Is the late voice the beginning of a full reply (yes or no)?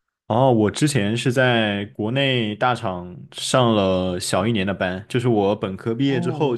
no